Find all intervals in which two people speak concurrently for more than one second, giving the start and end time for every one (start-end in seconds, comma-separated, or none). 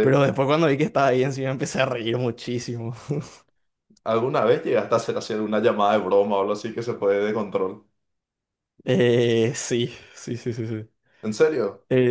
none